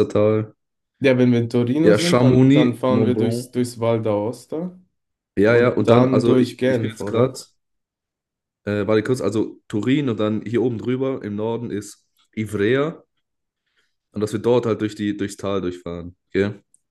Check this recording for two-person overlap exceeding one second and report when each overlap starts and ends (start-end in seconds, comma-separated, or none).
1.8-3.5, 5.5-7.4